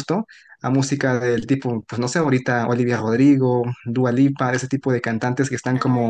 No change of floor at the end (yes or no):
yes